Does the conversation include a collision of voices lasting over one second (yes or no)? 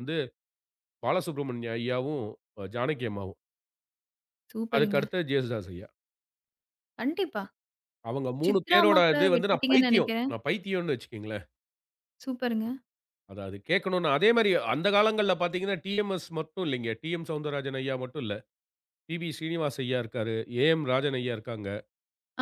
yes